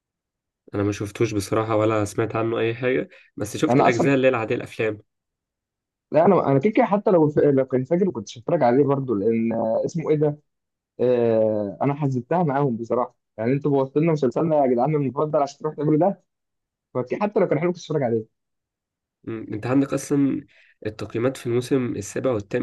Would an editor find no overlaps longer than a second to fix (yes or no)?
yes